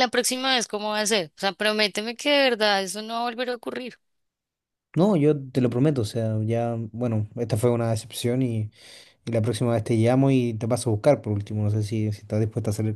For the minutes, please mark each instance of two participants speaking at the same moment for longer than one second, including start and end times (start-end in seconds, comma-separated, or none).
none